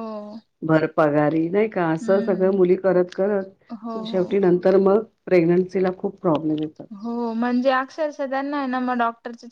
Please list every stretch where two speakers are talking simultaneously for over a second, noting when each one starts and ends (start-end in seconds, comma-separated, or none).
none